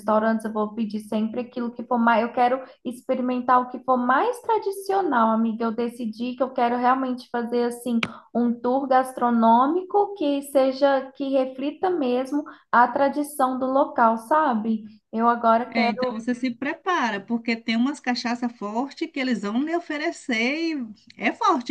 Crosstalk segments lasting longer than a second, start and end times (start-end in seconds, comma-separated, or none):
none